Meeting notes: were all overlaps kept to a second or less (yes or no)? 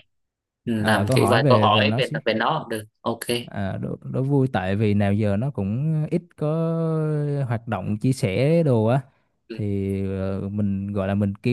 no